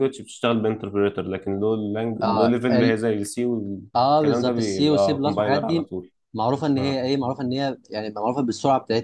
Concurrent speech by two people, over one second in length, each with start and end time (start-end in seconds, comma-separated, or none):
4.0-5.9